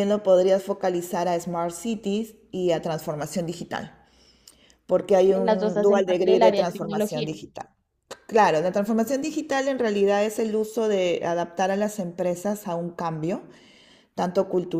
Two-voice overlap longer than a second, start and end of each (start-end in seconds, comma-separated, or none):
5.3-7.4